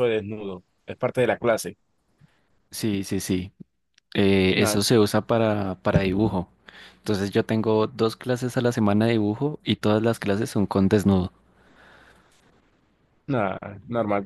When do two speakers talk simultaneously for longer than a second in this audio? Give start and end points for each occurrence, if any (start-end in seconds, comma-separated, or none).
none